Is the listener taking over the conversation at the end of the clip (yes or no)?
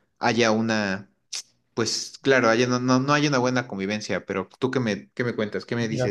yes